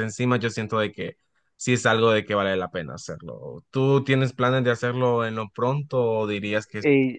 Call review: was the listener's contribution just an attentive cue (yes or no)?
no